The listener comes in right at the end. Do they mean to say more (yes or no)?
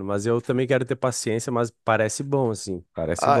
yes